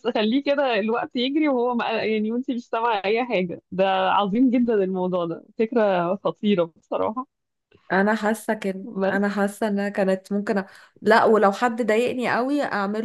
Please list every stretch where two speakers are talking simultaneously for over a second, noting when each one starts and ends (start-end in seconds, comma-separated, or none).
none